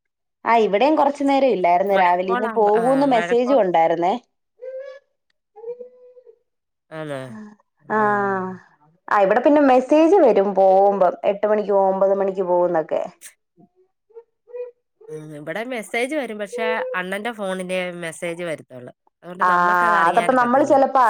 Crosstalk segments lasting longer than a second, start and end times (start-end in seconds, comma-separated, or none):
2.0-3.6